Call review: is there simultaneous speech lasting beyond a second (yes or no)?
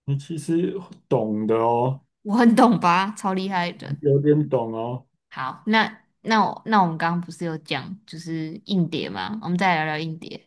no